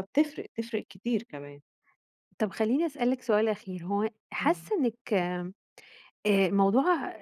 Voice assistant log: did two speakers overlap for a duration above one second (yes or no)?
no